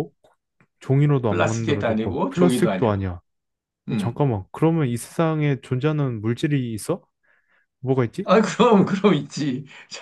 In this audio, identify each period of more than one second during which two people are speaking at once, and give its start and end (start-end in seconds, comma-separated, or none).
1.3-3.1